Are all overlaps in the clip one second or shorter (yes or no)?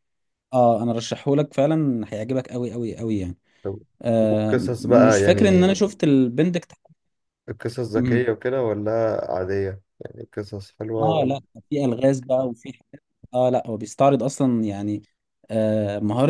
no